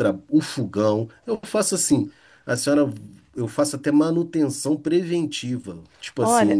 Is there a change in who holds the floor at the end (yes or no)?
yes